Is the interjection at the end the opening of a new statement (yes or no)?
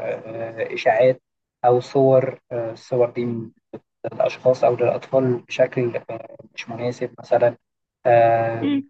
yes